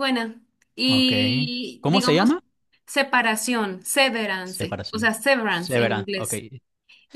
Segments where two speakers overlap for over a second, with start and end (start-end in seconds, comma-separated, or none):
4.4-6.3